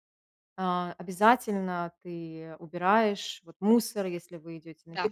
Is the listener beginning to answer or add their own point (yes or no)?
no